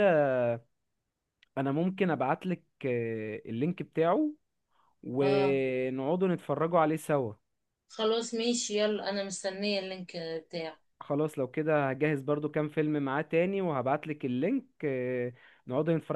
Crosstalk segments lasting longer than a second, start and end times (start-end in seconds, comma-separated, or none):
none